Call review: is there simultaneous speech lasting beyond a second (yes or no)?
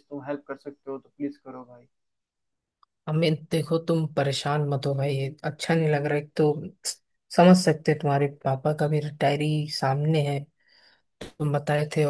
no